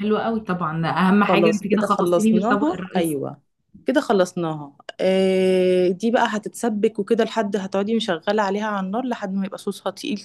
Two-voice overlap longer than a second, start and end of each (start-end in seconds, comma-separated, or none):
1.3-3.2